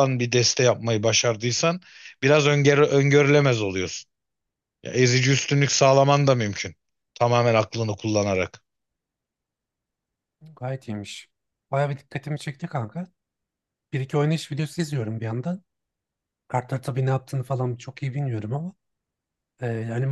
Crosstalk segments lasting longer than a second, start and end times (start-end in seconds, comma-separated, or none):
none